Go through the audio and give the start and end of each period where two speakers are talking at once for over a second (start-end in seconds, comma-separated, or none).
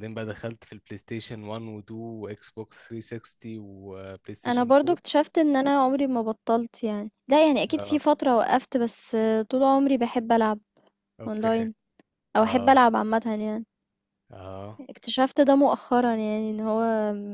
none